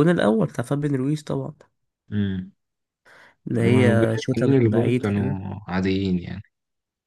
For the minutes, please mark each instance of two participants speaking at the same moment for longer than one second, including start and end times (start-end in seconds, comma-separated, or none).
3.5-5.4